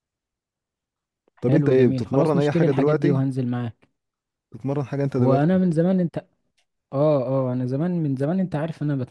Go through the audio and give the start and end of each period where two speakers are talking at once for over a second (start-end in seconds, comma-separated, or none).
1.4-3.2